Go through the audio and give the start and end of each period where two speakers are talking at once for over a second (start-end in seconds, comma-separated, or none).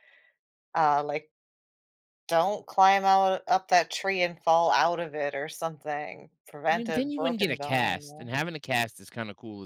6.7-8.3